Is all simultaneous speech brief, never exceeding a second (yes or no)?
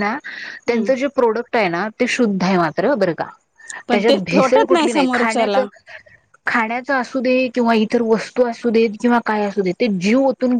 yes